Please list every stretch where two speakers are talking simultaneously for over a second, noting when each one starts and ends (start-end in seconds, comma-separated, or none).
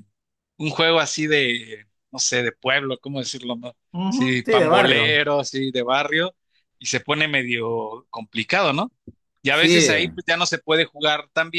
3.9-5.2